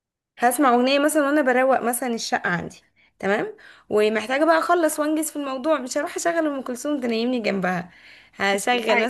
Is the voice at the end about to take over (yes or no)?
no